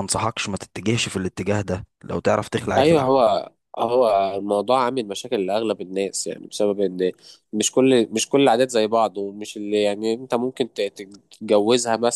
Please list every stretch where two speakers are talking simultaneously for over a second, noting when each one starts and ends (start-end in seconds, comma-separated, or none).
none